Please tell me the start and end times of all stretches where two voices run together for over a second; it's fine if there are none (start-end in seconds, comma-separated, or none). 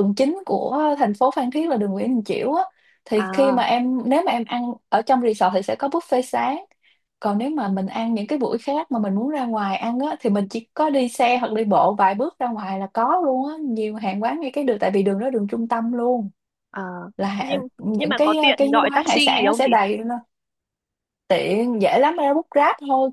17.4-19.7